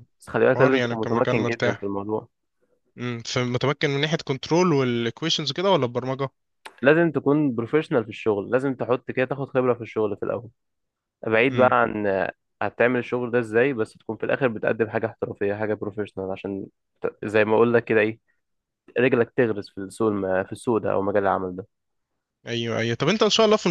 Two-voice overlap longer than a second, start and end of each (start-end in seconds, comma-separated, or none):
0.5-1.9